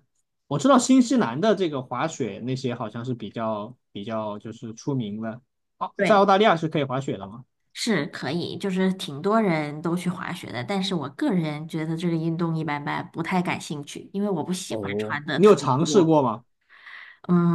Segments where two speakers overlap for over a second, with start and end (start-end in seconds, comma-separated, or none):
14.7-16.2